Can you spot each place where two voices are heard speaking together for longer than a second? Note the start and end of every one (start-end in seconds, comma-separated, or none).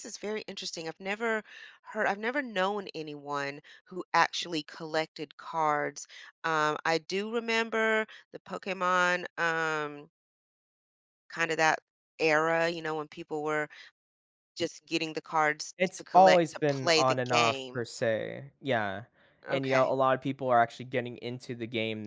15.8-17.8